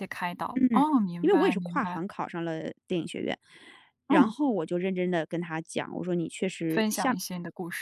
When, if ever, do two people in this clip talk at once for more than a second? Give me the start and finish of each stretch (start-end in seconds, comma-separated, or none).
0.5-2.0